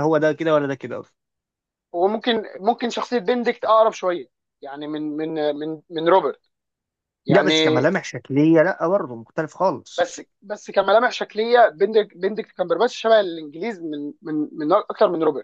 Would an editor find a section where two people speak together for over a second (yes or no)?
no